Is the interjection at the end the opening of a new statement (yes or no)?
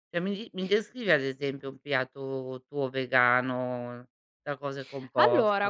yes